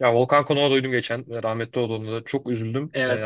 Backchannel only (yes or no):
no